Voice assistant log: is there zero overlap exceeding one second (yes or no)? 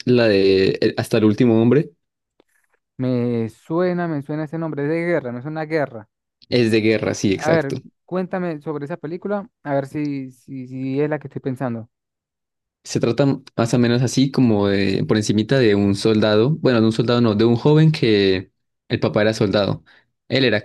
yes